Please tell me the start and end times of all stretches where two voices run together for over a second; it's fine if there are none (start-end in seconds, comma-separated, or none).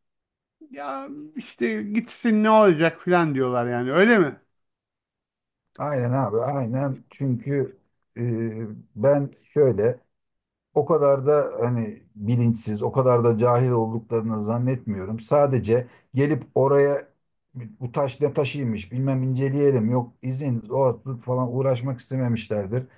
none